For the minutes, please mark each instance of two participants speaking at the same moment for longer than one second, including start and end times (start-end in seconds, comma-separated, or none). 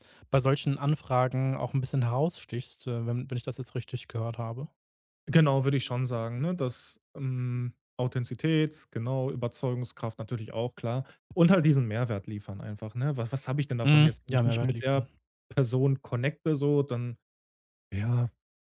13.8-15.1